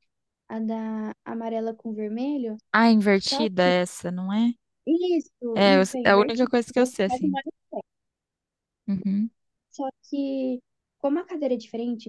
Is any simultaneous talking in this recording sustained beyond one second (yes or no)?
yes